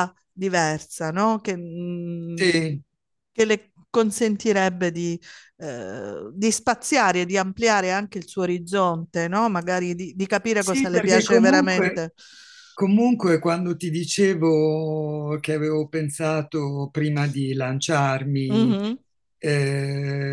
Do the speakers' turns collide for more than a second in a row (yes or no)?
yes